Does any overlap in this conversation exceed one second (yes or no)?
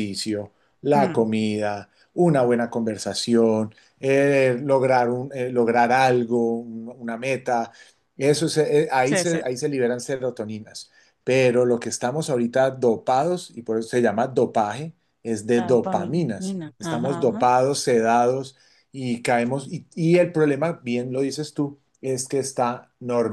yes